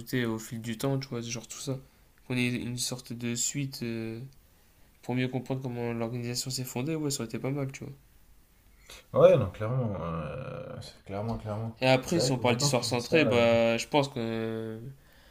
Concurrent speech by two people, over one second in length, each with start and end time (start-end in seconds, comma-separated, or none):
11.8-13.2